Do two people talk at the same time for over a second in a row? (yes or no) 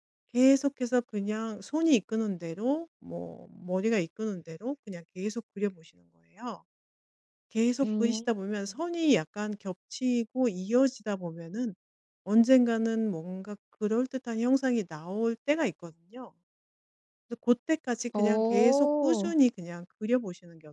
yes